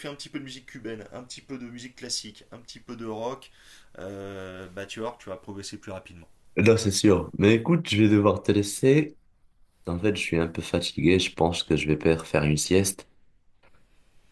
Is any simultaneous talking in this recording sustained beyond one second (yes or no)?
no